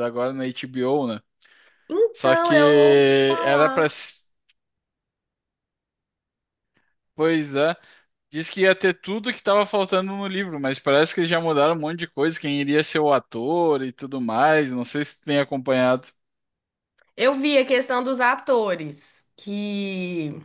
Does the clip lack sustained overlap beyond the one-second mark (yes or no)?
no